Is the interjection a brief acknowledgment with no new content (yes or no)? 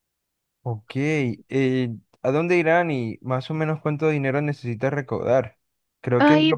yes